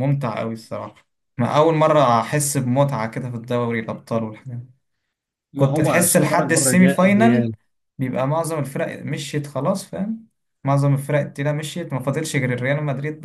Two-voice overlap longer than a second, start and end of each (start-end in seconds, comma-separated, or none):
5.5-7.5